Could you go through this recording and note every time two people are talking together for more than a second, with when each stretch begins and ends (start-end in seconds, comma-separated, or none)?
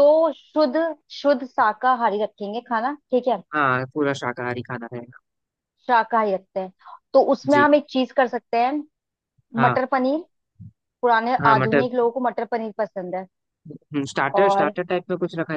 none